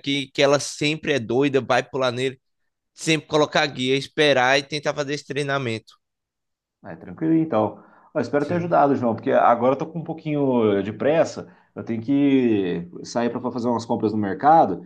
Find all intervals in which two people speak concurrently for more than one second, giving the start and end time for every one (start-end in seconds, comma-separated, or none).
none